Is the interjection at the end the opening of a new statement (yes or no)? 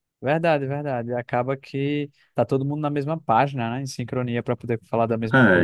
yes